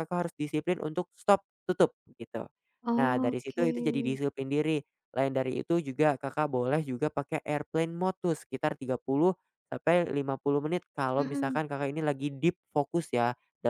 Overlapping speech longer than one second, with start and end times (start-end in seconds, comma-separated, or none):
3.0-4.2